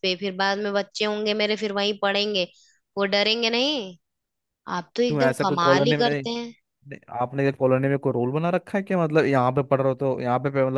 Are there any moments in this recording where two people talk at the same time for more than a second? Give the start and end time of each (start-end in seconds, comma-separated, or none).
5.1-6.5